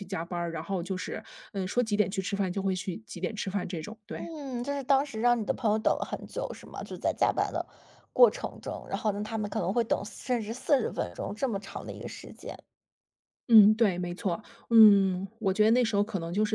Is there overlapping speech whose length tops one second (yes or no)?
no